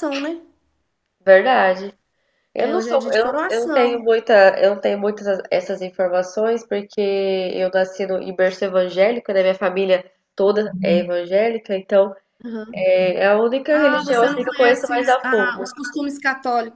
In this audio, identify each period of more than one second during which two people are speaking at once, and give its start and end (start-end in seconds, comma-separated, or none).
2.6-4.1, 13.7-15.7